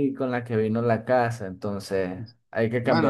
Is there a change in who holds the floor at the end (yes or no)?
yes